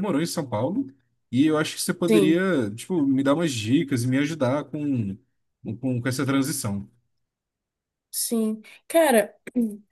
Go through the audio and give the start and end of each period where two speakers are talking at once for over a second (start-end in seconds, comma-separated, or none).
none